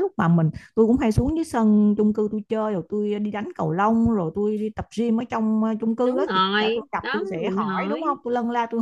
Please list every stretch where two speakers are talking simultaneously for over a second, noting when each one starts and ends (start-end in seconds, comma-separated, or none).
6.0-8.2